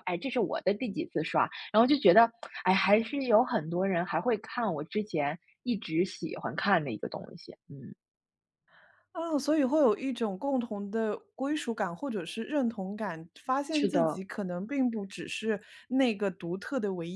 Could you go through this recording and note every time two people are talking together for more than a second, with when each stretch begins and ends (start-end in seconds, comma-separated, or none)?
none